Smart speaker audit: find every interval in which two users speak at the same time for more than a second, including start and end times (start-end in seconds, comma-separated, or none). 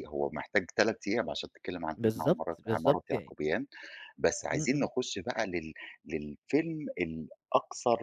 1.9-3.3